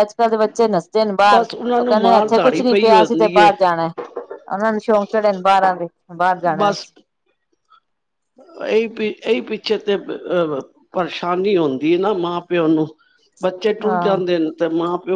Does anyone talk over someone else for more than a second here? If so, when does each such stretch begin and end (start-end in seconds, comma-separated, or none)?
1.3-3.5